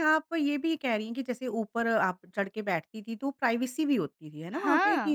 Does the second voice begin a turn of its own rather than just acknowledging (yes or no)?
no